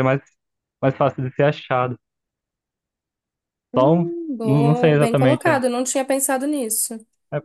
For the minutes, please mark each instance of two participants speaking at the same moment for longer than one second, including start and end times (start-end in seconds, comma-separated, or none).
3.8-5.6